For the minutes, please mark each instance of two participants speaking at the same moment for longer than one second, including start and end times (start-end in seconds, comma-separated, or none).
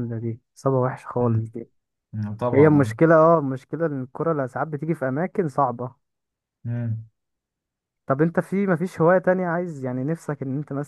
none